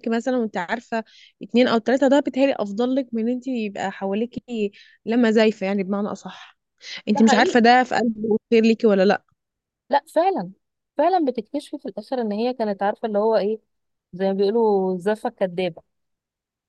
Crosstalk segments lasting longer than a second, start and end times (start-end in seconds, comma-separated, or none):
none